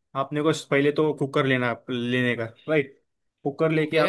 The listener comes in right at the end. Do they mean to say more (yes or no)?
no